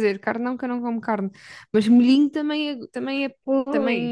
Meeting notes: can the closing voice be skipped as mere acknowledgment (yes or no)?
no